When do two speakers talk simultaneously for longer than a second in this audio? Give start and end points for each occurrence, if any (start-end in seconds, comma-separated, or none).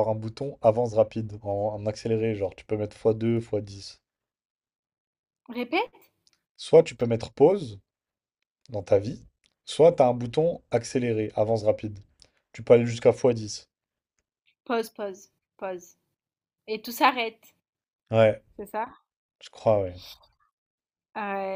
none